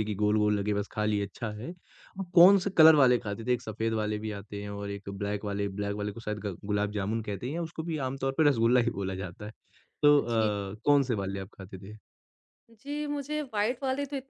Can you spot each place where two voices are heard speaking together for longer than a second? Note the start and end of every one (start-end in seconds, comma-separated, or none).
none